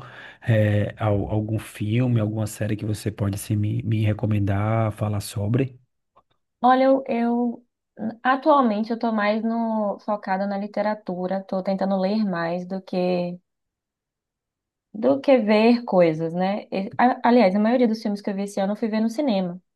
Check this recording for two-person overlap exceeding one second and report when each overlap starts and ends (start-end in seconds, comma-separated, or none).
none